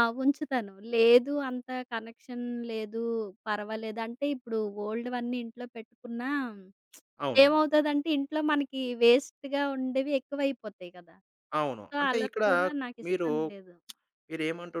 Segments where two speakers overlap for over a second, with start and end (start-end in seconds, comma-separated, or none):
none